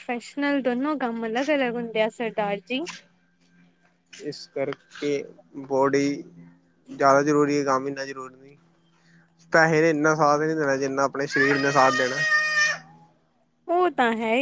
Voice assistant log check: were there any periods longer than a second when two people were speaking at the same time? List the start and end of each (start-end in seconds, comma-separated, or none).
none